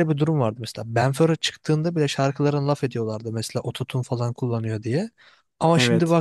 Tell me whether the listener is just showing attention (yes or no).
yes